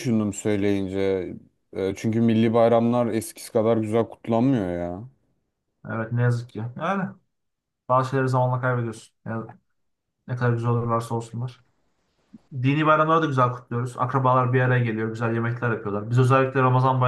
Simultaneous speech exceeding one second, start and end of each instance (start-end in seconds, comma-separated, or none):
none